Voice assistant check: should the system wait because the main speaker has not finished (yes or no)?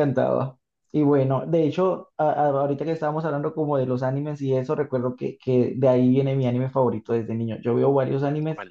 yes